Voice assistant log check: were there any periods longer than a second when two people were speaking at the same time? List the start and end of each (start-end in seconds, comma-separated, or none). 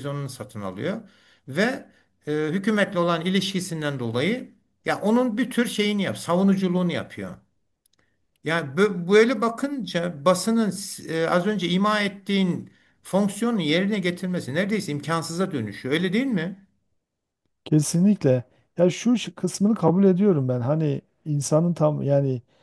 none